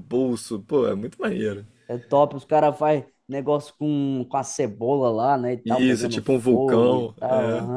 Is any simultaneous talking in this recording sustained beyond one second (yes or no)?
yes